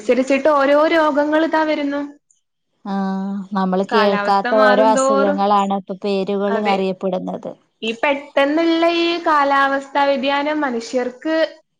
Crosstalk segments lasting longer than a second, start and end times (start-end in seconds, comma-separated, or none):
3.9-5.4